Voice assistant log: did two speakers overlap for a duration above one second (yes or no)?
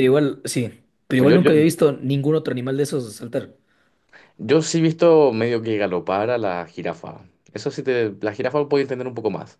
no